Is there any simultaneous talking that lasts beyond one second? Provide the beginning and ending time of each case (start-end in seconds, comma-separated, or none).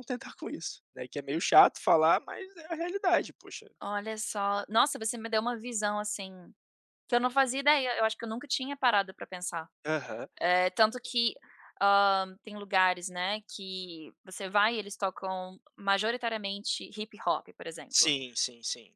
none